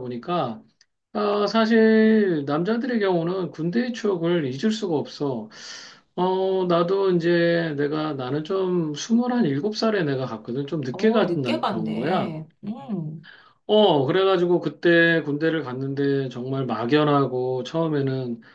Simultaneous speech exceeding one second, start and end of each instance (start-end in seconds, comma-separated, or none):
10.9-12.3